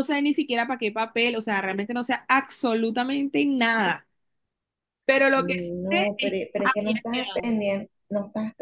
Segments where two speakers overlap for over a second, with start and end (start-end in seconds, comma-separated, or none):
5.3-7.5